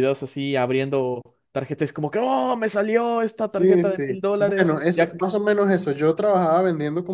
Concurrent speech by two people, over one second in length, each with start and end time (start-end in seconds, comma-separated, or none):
3.5-5.1